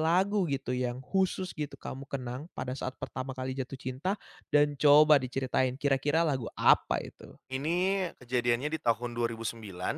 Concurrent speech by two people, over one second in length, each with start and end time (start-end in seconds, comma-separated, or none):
none